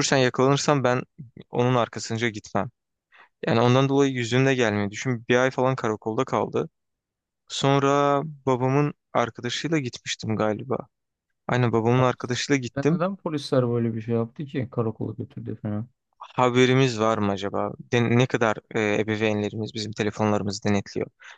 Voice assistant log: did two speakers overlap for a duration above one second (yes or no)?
no